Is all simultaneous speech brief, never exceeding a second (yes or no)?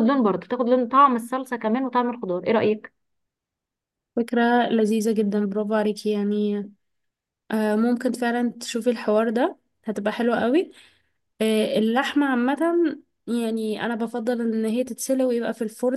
yes